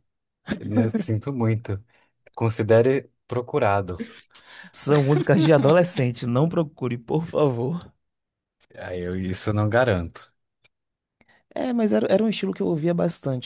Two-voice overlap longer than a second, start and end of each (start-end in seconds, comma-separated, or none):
none